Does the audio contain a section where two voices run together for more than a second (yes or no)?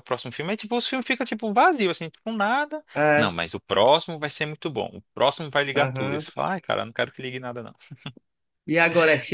no